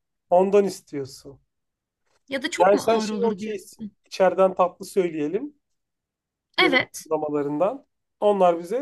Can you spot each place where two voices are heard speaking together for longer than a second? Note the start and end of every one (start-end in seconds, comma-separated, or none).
2.6-3.9